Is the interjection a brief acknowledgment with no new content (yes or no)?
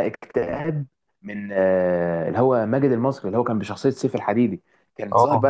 yes